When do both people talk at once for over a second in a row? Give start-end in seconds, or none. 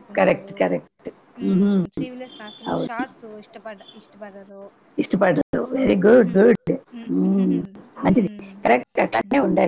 none